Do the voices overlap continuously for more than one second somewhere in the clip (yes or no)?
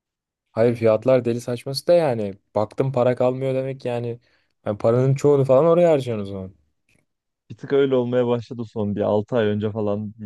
no